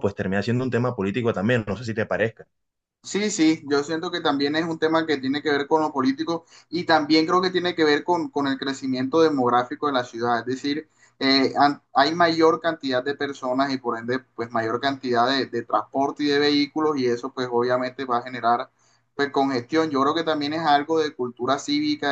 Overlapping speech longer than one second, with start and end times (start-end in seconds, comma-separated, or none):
none